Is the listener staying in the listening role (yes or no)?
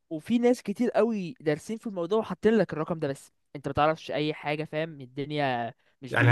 no